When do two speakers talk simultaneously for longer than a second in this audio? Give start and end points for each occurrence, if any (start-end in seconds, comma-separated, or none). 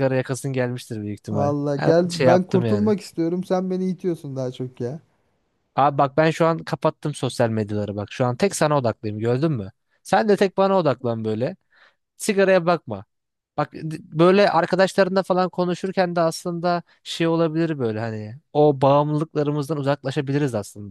1.3-2.9